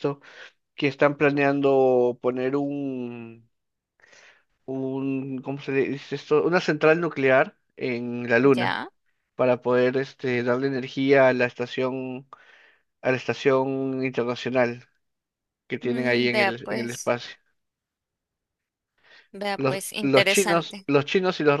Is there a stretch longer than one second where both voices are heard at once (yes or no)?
yes